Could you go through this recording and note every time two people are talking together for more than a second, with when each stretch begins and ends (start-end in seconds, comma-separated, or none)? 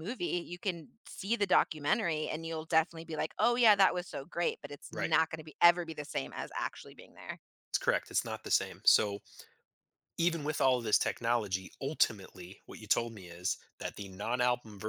none